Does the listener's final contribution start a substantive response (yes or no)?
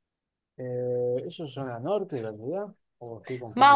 yes